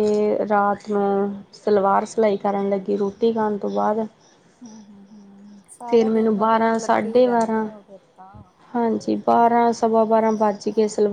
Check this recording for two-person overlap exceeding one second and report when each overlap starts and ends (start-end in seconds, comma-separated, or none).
5.9-7.7